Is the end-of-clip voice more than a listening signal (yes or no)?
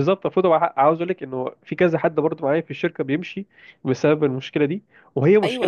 yes